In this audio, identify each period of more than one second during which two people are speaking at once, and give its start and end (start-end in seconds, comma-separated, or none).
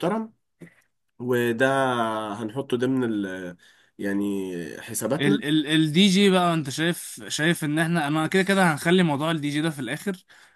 none